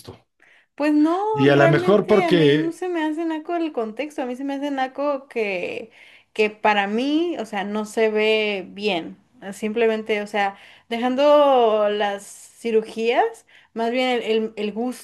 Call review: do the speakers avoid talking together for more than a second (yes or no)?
no